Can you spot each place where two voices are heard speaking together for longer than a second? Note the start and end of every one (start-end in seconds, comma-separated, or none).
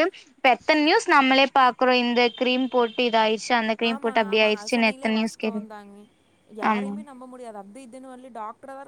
3.9-5.6